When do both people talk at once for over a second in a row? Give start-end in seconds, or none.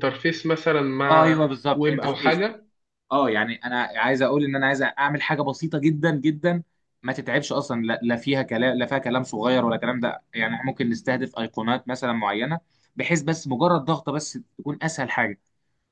1.0-2.5